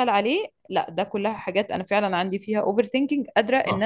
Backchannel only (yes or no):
no